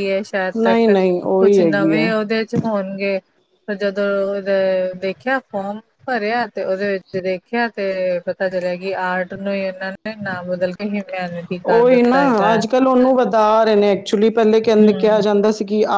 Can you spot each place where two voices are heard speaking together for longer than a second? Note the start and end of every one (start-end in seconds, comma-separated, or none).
0.6-2.1